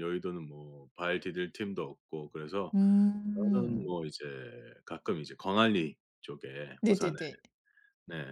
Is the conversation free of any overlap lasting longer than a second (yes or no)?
yes